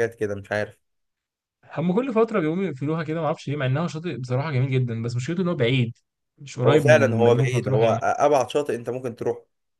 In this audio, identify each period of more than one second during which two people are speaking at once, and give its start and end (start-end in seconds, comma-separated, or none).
6.7-8.0